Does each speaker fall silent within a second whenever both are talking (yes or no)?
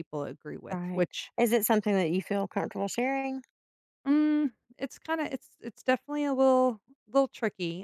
yes